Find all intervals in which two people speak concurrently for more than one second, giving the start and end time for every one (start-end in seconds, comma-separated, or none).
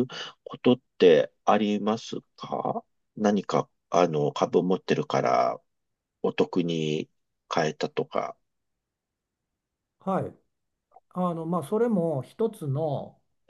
none